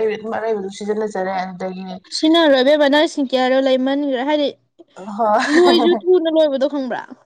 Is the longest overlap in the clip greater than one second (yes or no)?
no